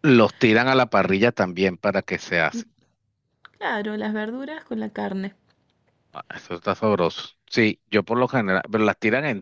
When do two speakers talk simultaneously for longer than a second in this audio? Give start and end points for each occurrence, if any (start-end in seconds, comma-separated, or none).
none